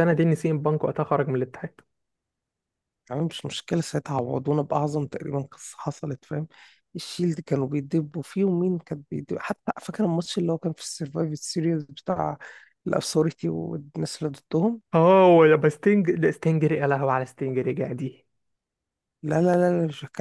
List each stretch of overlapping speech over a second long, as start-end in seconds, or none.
none